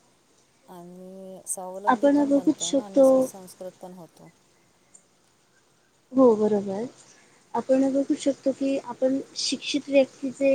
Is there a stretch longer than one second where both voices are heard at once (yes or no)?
yes